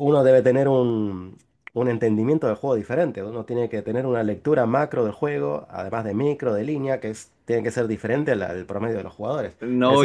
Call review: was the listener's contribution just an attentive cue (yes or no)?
no